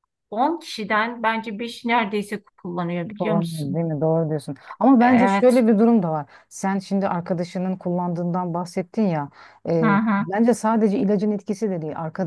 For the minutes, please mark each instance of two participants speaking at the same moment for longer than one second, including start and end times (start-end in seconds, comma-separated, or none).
none